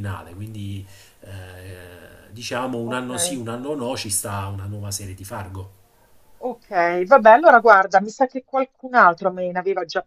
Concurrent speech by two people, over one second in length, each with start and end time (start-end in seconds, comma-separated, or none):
none